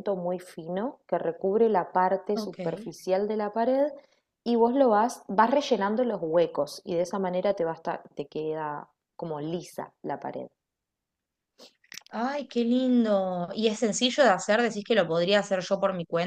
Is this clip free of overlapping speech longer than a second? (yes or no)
yes